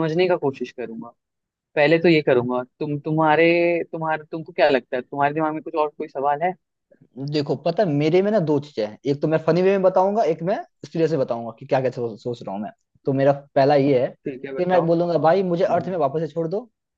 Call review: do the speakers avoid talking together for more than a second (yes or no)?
yes